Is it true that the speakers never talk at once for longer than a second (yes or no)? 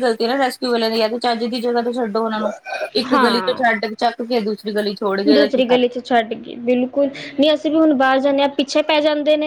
yes